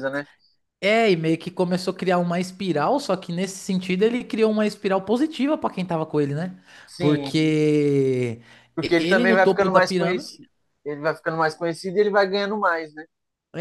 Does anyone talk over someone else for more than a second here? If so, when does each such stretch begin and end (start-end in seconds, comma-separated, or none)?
9.0-10.4